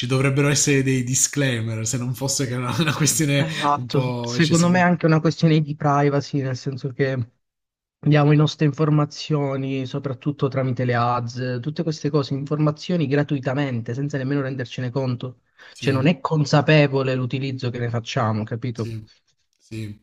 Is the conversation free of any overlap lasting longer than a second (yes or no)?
no